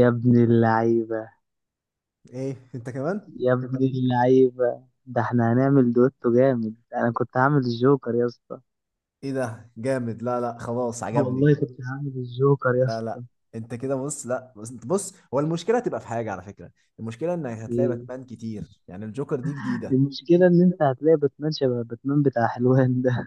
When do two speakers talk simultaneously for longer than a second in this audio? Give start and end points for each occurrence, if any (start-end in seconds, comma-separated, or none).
none